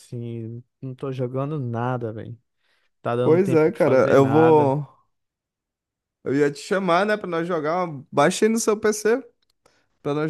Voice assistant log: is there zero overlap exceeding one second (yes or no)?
no